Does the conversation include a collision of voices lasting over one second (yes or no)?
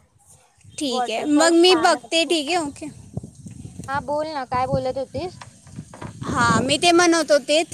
yes